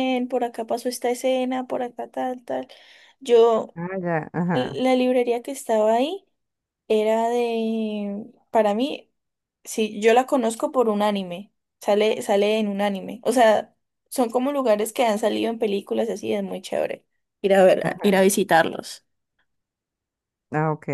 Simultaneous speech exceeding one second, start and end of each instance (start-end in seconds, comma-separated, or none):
none